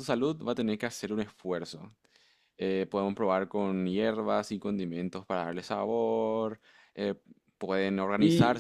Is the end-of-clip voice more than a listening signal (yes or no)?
no